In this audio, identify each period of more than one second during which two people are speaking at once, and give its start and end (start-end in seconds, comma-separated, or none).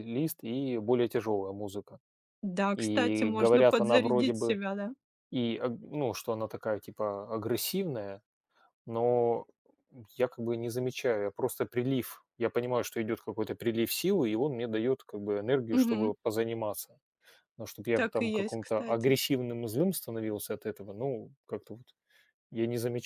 2.8-4.6, 17.9-19.1